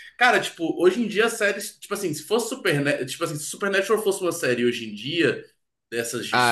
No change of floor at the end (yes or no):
no